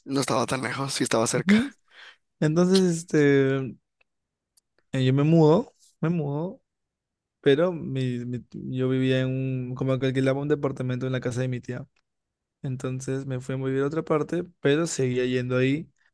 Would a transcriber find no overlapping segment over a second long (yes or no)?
yes